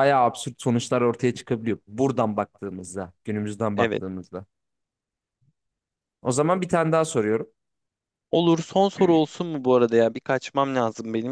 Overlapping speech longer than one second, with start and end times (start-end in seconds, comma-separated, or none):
none